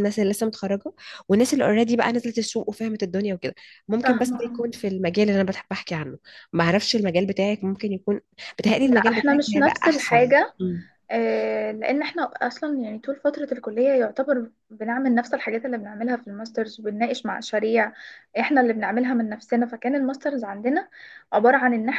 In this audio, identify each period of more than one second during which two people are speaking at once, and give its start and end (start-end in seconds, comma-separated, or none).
8.8-10.5